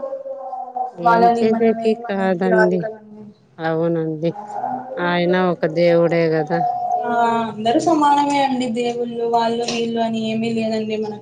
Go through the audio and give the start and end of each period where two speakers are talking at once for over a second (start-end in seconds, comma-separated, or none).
1.1-2.8